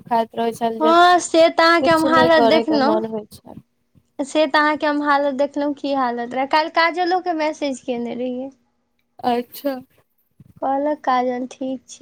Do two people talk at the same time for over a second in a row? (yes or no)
yes